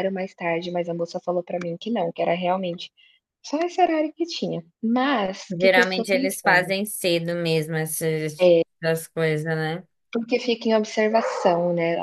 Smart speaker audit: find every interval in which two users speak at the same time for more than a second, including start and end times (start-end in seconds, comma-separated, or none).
5.5-6.7